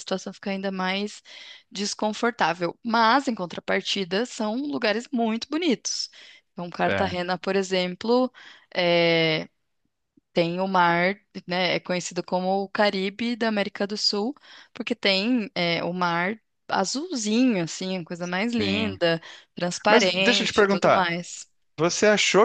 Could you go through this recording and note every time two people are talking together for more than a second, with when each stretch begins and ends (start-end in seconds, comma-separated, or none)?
19.9-21.2